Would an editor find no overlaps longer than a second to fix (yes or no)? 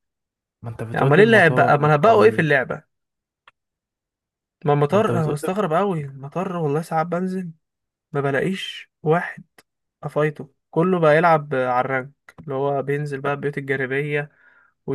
no